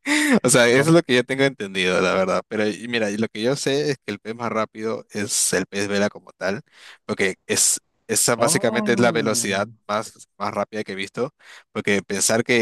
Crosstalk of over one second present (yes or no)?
yes